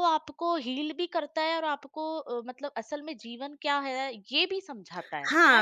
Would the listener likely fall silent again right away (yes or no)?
no